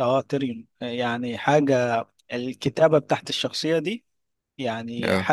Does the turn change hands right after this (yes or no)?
no